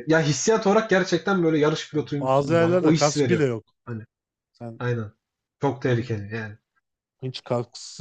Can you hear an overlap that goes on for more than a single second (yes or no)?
yes